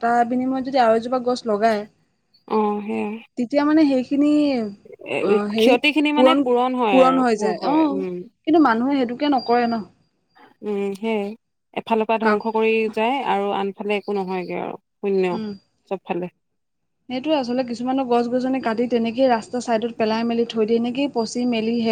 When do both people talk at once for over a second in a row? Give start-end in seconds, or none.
5.6-8.2